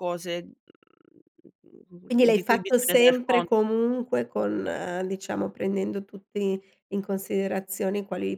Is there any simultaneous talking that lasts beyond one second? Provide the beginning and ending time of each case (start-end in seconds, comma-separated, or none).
2.0-3.6